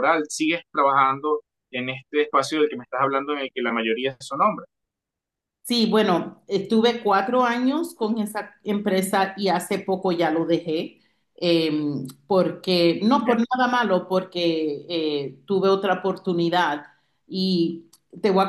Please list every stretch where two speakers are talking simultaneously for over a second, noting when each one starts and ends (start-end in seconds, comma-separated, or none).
none